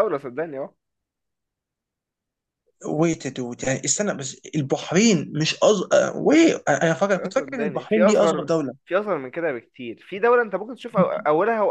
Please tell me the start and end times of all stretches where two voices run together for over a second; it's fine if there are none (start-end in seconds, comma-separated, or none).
7.2-8.7